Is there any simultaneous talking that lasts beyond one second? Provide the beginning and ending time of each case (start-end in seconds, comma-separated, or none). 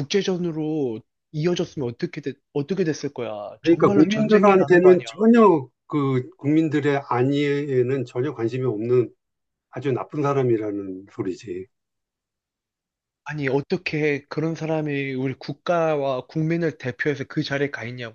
3.6-5.1